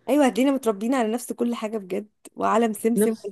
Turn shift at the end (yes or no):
no